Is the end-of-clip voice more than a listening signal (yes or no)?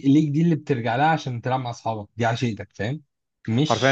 yes